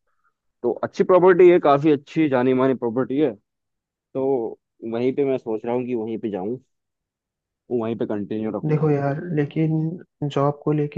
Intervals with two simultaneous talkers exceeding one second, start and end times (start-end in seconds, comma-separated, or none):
none